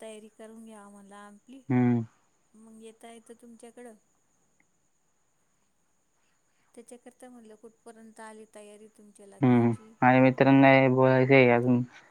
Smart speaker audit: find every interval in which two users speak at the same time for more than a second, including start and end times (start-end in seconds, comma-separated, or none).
none